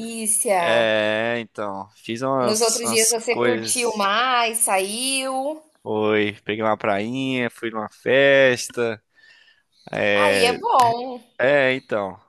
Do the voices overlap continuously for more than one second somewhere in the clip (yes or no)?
yes